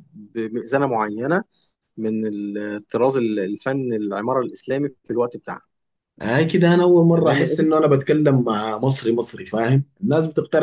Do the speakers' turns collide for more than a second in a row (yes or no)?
no